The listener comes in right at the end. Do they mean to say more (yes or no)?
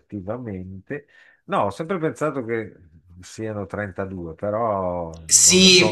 yes